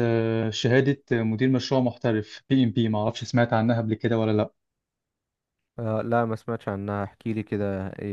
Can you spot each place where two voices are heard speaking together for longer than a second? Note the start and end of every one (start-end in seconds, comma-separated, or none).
none